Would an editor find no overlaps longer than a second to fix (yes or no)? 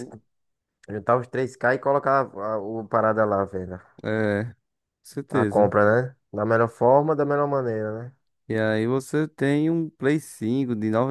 yes